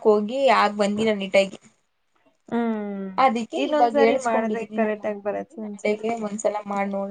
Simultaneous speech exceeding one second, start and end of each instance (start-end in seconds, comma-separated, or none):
3.6-6.0